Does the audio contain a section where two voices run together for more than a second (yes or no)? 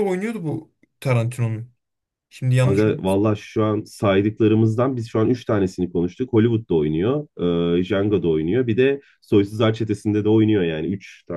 no